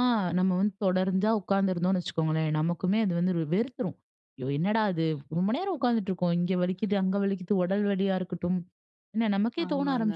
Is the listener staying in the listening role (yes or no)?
yes